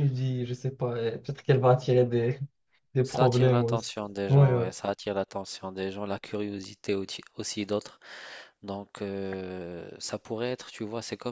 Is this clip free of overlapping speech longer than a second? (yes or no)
no